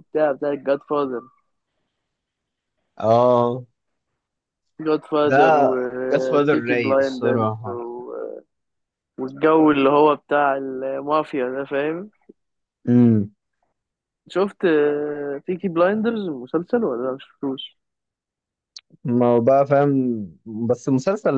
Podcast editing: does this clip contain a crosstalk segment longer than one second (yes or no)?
yes